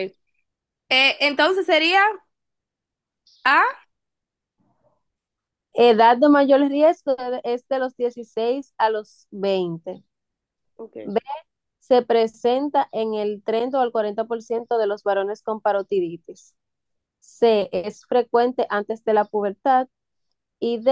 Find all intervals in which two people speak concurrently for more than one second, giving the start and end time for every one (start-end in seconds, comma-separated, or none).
none